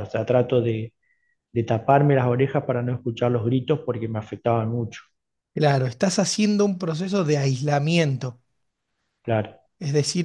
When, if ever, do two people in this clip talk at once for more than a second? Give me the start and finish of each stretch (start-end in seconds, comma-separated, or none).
none